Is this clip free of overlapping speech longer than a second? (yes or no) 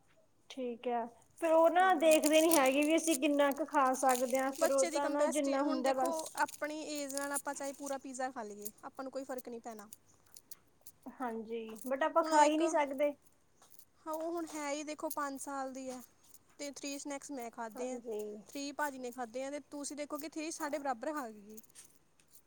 no